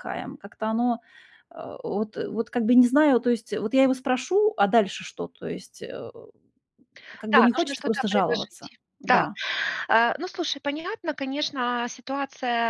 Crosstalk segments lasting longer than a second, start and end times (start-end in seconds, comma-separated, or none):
7.3-9.3